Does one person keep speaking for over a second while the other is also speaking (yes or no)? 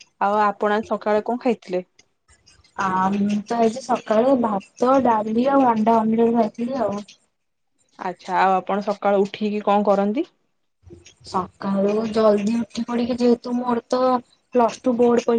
no